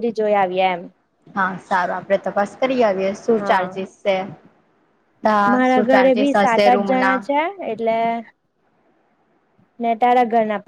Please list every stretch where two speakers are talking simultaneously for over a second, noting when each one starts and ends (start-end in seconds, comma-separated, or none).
5.5-7.2